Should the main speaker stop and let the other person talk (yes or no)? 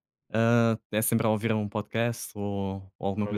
yes